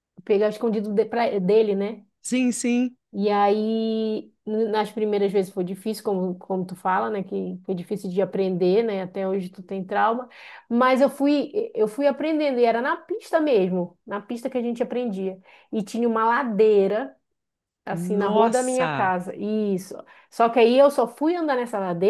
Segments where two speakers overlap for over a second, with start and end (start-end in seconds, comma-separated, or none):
17.9-19.1